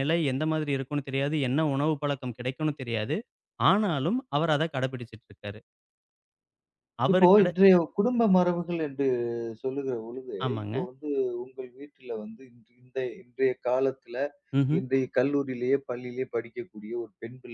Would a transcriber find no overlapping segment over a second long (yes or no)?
yes